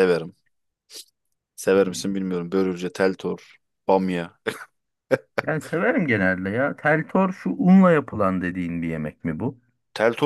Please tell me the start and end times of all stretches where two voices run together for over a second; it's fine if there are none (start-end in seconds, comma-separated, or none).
none